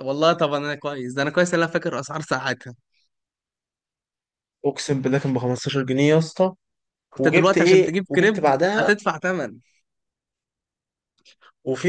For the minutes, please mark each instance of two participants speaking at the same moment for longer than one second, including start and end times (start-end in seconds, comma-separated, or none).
7.2-8.9